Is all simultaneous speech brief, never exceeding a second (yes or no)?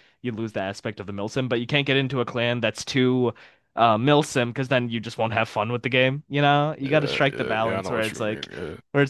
no